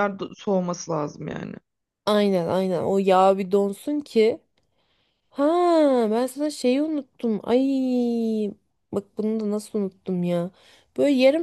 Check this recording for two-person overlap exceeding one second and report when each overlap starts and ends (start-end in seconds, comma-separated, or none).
none